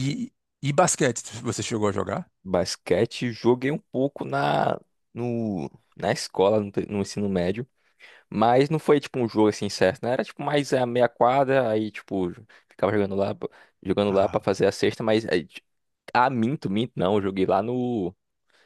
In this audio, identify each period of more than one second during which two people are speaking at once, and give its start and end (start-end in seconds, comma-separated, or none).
none